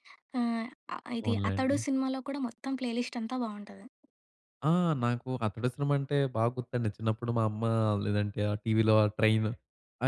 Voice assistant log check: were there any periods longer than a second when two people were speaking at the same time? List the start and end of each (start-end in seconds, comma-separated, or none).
none